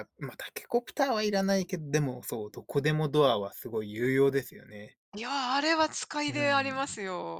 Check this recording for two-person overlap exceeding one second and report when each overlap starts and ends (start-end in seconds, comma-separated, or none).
none